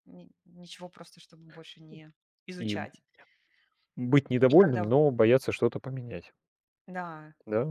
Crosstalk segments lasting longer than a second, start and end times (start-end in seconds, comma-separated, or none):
none